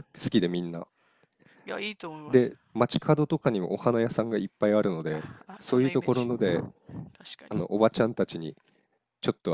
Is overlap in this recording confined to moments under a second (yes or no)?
no